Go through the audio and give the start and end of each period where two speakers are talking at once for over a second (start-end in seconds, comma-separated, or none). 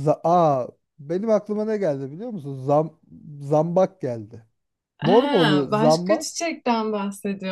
5.0-6.3